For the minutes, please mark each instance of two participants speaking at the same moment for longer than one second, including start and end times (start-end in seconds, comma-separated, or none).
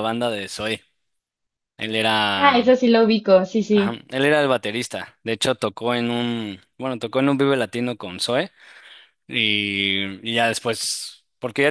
none